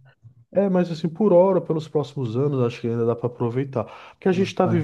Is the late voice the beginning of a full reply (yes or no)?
no